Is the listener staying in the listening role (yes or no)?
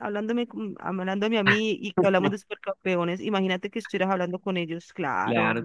no